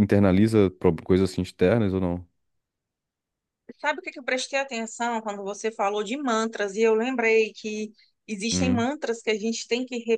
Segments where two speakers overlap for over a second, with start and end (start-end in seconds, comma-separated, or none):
none